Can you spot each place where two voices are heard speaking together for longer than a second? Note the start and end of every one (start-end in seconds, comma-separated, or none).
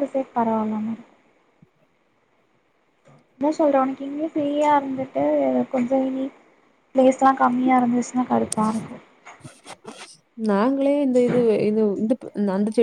none